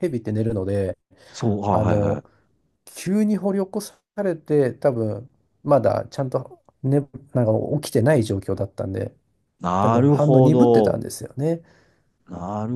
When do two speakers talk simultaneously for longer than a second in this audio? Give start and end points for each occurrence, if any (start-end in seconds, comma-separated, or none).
9.8-11.0